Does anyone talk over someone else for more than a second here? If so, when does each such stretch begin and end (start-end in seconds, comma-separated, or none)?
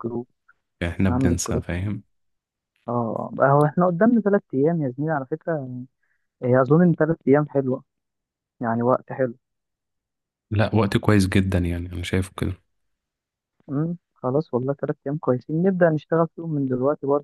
none